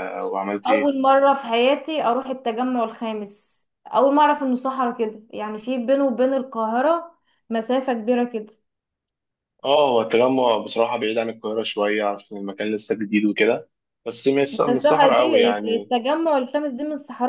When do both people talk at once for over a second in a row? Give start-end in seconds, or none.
14.5-15.9